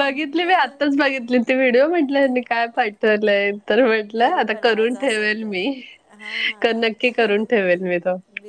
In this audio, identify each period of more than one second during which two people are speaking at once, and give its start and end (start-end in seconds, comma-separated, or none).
4.1-5.5